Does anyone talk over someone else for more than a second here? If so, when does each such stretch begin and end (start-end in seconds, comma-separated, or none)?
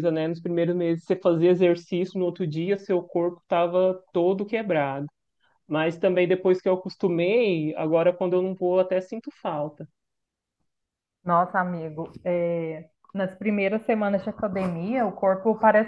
none